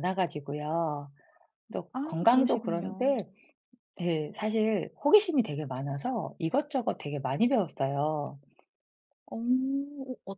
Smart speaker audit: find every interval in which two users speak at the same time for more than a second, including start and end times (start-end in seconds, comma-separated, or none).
1.9-3.2